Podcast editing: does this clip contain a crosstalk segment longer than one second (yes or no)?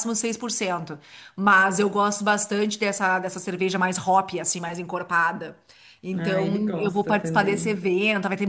yes